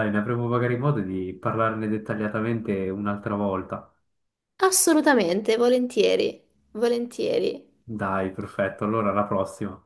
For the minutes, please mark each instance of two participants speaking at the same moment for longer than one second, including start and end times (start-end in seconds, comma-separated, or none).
none